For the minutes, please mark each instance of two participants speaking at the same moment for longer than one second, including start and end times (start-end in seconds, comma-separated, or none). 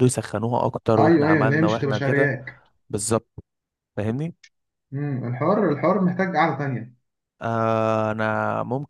1.0-2.3